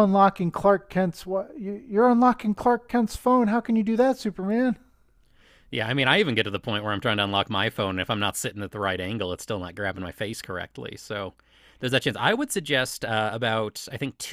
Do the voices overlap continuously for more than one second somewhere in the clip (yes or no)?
no